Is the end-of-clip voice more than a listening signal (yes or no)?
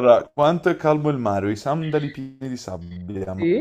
no